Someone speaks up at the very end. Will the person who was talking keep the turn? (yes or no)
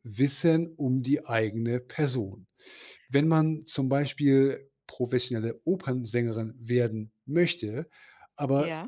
yes